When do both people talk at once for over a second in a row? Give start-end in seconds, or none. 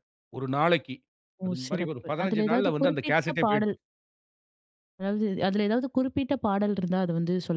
1.4-3.7